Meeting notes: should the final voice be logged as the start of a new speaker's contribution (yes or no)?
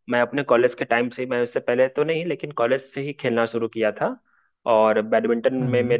no